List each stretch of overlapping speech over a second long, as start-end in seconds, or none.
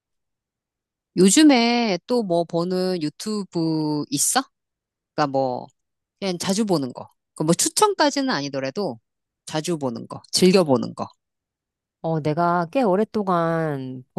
none